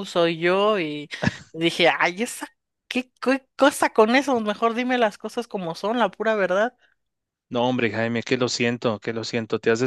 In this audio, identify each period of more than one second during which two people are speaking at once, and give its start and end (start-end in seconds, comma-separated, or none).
none